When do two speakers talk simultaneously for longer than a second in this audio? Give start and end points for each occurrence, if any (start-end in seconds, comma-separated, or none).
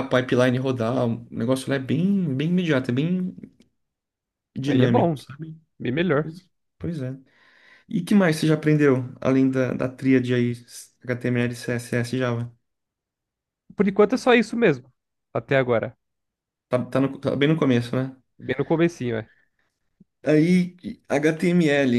none